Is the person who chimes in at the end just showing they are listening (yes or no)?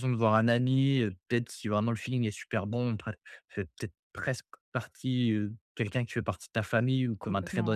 yes